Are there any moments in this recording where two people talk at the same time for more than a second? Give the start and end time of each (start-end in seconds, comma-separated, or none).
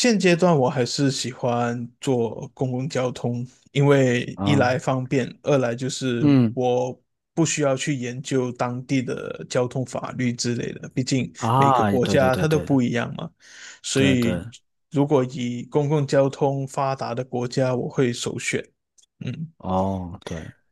11.4-12.7